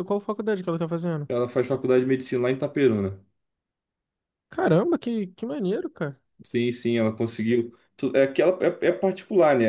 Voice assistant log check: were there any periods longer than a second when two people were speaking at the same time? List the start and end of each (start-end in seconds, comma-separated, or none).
none